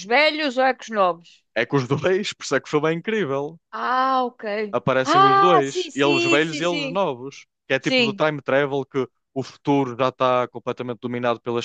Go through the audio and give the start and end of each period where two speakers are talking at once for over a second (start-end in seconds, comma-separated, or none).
4.7-7.0